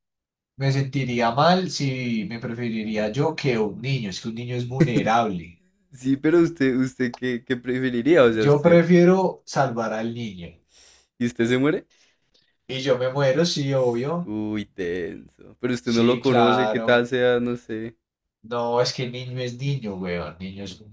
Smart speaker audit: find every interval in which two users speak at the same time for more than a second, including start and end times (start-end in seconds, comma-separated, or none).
15.8-17.1